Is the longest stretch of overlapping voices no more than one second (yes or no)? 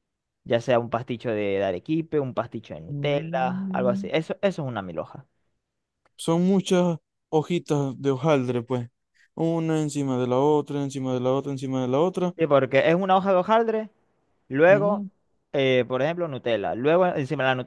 no